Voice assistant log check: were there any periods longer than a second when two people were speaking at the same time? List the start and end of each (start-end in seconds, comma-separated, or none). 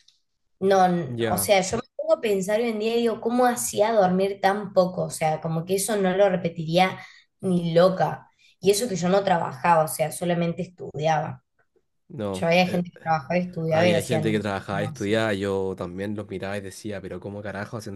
13.7-15.1